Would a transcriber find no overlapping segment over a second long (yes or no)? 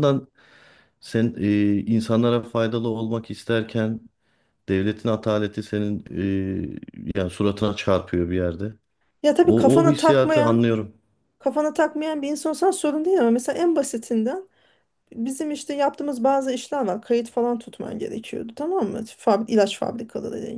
no